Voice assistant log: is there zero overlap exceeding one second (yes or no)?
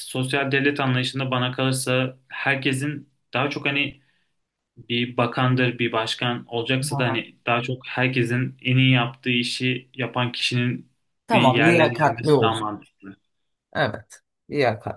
no